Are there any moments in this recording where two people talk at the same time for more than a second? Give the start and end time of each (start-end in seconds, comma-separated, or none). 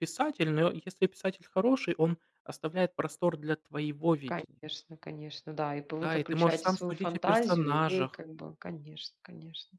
6.0-8.2